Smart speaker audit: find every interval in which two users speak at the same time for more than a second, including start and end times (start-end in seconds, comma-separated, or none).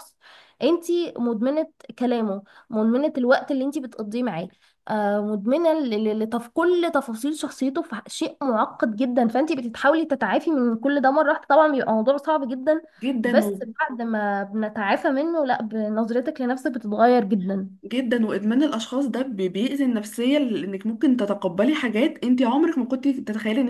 none